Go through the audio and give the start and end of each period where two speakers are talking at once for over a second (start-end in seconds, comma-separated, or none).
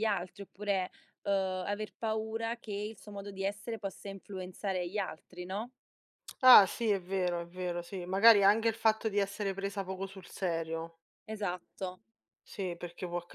none